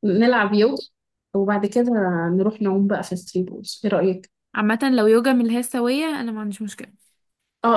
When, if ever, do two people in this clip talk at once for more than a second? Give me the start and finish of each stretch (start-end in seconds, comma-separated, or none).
none